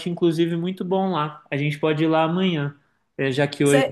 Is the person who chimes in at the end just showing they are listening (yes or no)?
yes